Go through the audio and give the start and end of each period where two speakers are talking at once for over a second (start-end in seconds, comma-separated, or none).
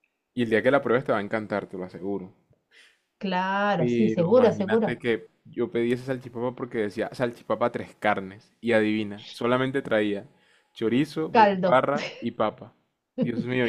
3.8-5.0